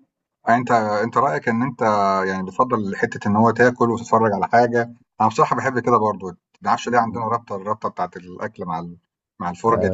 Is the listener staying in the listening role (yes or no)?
no